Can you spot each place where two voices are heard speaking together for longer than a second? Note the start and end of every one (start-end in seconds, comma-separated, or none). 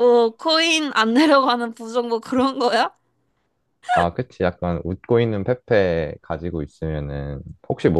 none